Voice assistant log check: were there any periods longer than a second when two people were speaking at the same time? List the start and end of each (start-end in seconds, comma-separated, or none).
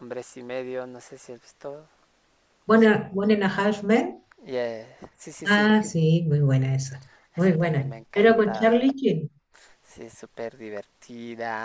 7.4-8.8